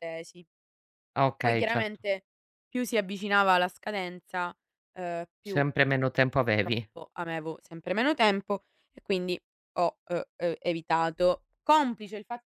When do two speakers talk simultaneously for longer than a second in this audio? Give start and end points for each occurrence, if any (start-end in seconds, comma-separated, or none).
none